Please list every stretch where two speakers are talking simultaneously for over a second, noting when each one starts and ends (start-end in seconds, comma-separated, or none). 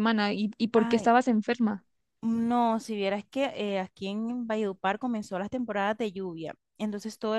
none